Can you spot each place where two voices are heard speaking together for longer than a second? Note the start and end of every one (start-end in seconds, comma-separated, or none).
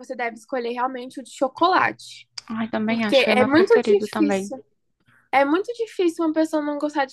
2.9-4.5